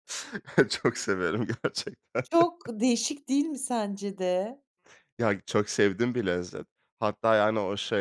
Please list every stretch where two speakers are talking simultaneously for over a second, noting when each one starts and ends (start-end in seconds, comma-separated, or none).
none